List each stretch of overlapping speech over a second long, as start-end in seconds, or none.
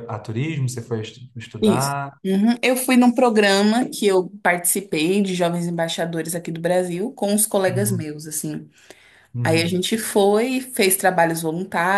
none